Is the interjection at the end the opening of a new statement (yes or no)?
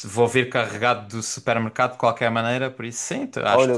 yes